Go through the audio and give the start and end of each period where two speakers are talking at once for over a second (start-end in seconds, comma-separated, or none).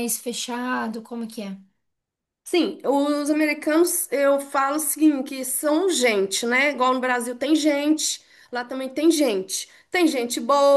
none